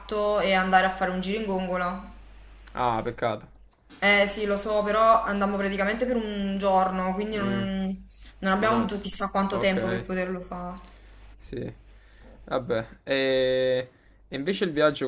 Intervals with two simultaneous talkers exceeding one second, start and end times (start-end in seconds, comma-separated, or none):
8.6-10.1